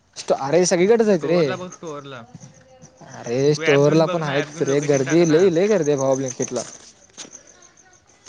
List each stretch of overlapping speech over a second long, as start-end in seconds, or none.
3.5-5.5